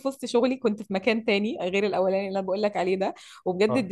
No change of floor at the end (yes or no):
yes